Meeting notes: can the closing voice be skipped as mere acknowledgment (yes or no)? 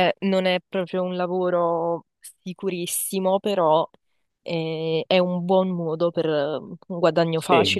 no